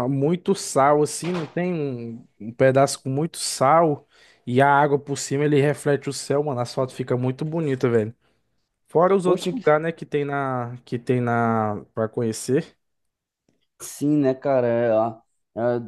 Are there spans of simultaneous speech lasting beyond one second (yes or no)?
no